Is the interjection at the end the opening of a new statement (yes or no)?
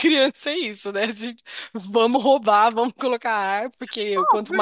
no